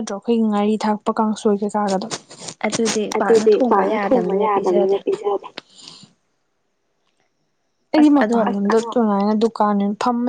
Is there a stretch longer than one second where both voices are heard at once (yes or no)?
yes